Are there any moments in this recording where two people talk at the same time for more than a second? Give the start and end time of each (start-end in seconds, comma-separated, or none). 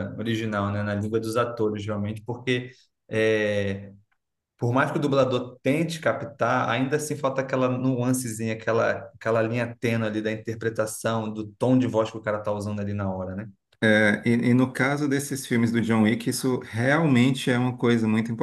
none